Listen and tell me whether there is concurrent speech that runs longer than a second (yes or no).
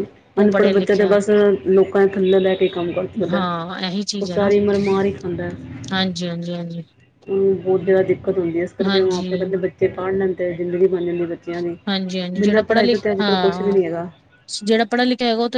yes